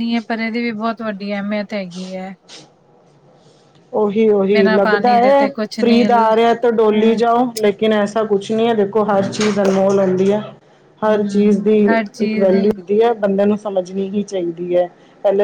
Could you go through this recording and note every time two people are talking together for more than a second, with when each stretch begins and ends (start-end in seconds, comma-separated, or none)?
4.5-6.5